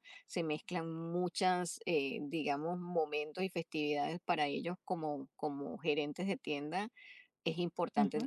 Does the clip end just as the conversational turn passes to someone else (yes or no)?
no